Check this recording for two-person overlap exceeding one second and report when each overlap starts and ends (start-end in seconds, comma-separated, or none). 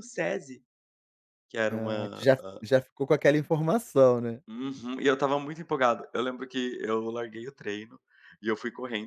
none